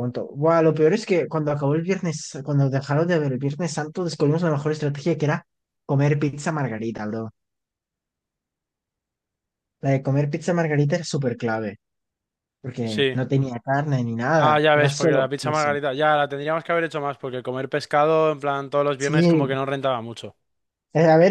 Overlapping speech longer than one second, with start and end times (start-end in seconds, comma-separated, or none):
14.3-15.8